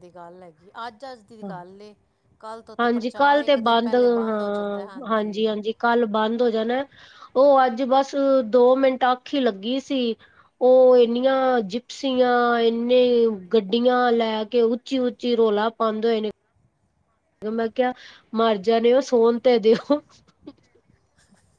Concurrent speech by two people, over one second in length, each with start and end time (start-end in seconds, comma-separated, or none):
2.8-4.8